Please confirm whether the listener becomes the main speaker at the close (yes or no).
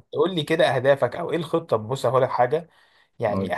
no